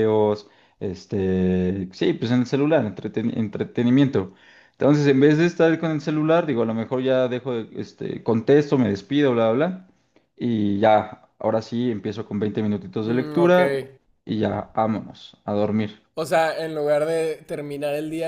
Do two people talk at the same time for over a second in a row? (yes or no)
no